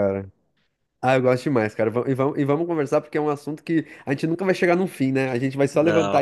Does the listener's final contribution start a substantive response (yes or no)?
no